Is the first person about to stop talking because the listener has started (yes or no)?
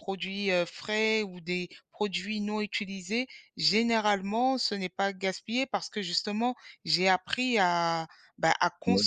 no